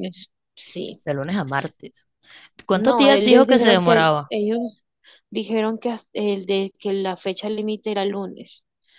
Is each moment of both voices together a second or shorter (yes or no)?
no